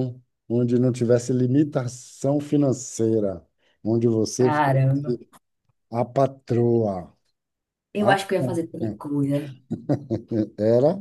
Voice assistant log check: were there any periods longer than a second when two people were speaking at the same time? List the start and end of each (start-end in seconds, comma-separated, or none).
none